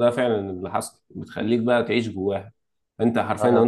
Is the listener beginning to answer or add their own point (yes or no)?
no